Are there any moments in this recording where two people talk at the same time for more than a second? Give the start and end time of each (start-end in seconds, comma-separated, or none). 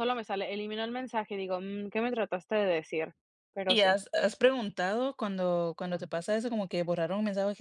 none